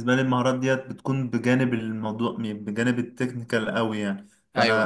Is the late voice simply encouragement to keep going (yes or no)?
yes